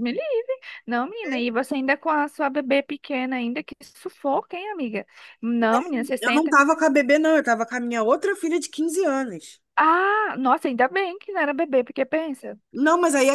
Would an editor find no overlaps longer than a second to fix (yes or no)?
yes